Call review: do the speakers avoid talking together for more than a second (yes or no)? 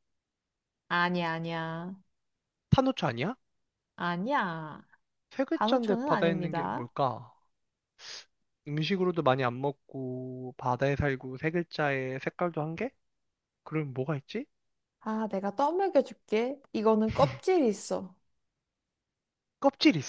no